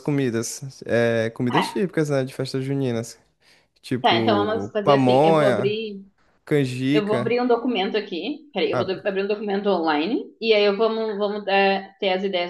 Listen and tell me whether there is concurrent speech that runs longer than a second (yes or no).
yes